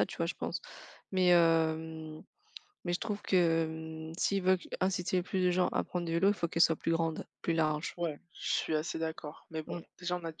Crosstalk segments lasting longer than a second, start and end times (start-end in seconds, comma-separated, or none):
none